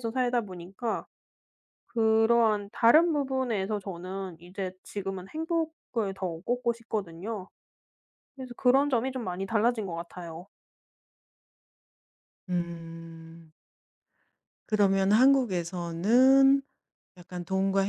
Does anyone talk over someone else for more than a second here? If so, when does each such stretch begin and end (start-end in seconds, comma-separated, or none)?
none